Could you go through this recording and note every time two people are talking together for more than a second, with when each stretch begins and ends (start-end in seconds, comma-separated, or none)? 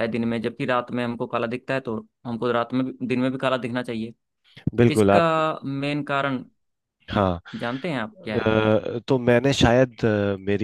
none